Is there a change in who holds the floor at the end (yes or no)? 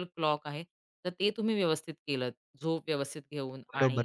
yes